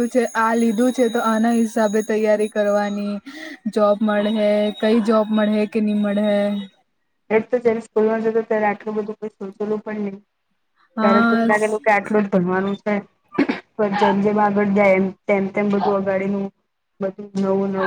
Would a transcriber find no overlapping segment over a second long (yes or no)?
yes